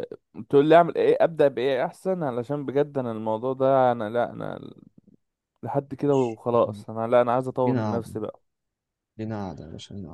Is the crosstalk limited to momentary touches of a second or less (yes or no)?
yes